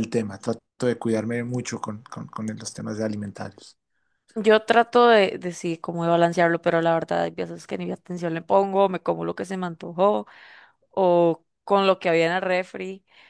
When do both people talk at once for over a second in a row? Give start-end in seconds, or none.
none